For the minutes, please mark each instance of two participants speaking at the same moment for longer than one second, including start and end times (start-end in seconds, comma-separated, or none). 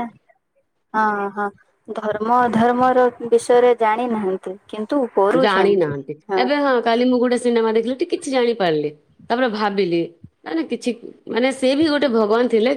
none